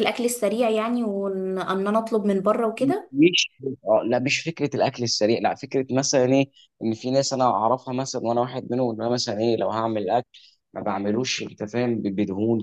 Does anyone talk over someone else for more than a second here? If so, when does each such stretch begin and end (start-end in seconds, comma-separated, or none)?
none